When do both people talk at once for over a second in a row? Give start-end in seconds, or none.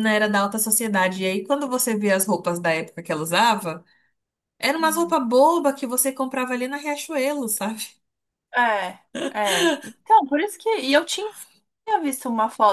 none